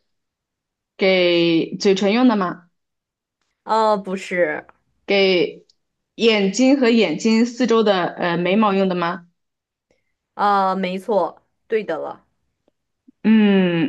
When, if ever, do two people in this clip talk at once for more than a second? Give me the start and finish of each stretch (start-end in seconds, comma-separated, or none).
none